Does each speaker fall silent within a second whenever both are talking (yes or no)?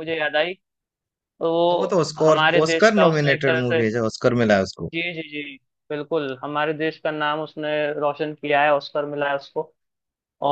no